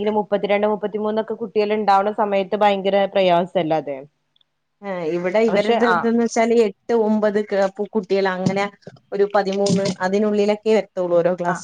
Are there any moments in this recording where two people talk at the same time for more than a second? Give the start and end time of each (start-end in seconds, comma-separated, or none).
none